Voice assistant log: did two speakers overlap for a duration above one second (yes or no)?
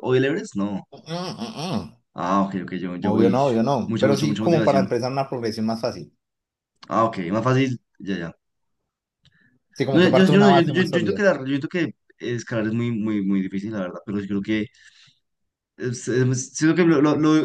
yes